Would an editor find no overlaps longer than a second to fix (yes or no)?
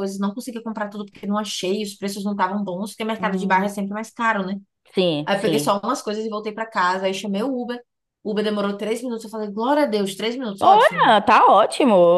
yes